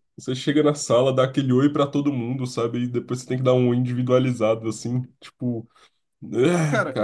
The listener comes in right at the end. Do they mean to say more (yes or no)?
yes